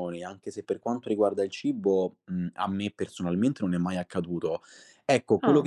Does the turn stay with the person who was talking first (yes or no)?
yes